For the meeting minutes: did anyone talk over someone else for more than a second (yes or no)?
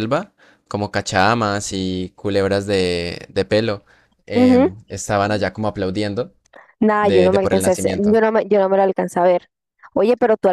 yes